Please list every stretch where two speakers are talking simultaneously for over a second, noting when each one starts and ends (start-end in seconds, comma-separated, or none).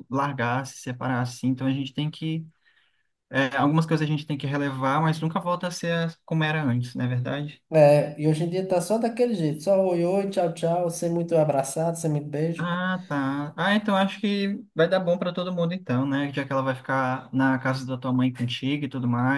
none